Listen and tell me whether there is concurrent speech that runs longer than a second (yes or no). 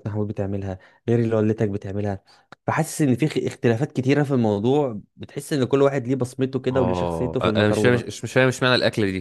yes